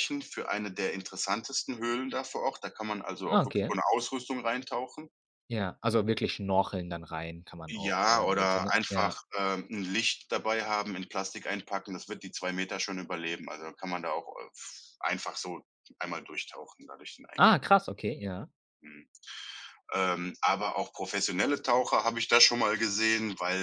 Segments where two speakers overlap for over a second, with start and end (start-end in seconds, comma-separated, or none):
7.7-9.2